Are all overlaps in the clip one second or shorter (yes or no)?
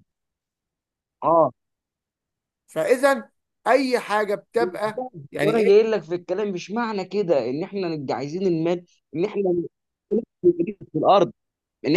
yes